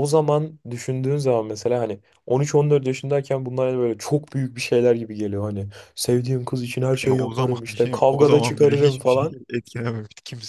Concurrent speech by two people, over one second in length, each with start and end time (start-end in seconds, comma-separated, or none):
7.0-9.4